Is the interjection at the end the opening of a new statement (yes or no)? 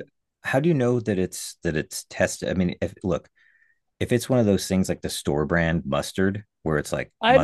yes